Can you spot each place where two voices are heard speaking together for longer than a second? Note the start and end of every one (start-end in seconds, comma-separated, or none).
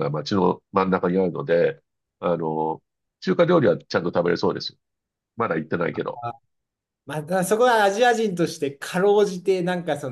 none